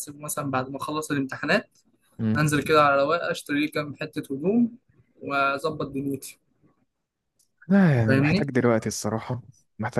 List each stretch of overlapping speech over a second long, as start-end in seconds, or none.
none